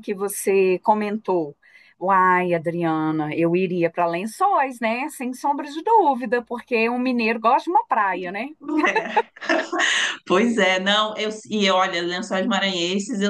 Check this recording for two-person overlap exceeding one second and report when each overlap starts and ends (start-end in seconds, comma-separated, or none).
none